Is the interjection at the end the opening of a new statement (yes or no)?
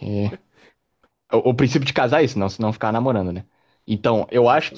no